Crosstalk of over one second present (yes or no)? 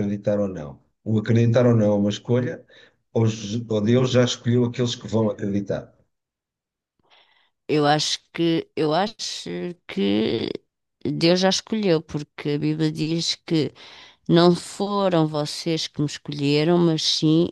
no